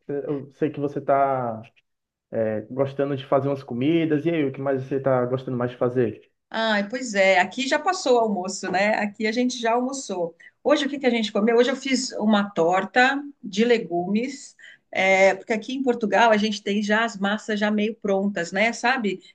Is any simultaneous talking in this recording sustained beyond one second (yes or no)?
no